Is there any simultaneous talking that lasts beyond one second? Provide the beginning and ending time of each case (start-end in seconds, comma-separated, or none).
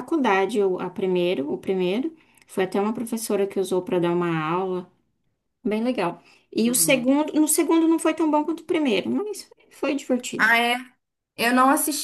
none